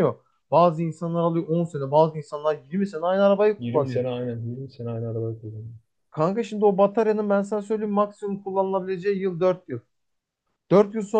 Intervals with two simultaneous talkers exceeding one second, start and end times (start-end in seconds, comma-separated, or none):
none